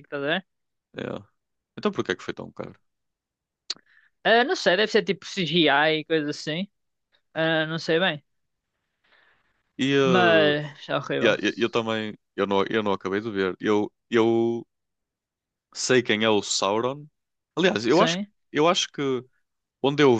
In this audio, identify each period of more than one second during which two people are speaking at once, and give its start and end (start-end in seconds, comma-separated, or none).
none